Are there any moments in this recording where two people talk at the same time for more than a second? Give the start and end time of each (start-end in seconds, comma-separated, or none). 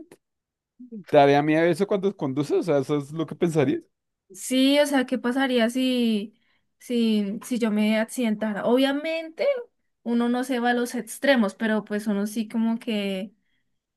none